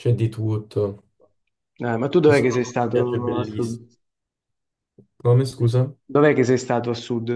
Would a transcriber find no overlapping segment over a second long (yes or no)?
no